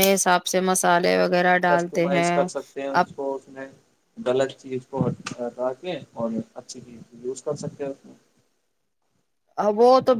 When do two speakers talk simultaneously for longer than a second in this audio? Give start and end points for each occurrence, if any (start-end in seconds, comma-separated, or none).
none